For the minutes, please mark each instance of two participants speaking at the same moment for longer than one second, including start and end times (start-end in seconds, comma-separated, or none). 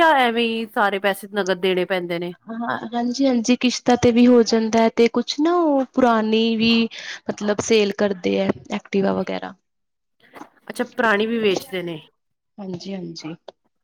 none